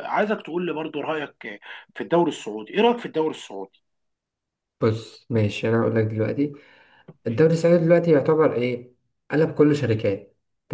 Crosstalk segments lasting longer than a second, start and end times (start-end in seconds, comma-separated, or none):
none